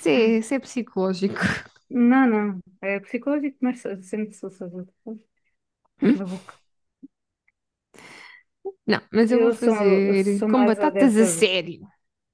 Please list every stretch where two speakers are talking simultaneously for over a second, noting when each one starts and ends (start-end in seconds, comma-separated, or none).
9.3-11.5